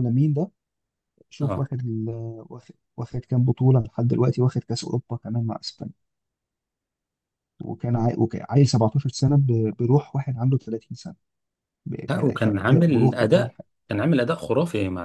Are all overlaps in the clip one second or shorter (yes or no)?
no